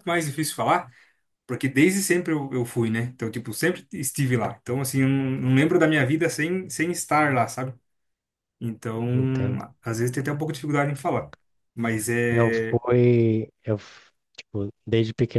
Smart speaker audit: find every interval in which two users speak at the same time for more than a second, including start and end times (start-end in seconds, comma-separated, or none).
none